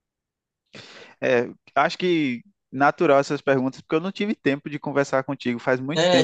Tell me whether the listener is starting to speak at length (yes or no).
yes